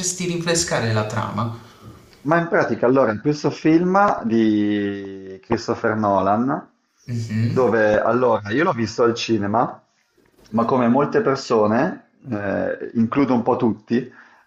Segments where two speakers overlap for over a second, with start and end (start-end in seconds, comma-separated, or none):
none